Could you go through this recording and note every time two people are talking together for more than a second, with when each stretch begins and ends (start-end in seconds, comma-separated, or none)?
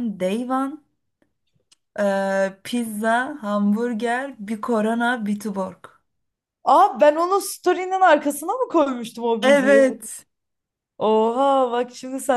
none